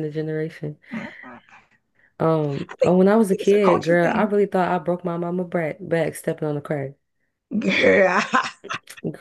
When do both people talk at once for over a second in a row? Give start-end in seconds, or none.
2.7-4.3